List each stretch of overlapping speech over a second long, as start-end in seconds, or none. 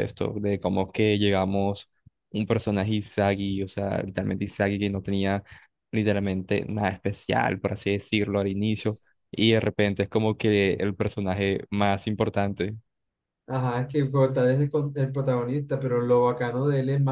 none